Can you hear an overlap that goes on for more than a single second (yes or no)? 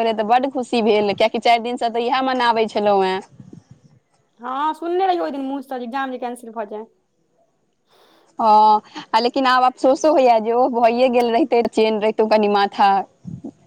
no